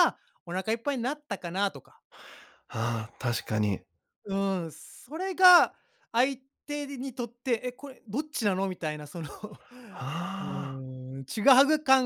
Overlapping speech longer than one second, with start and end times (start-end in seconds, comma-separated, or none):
none